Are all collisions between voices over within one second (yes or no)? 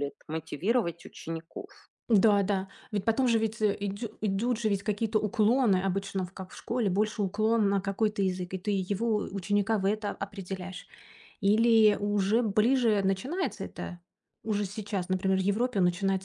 yes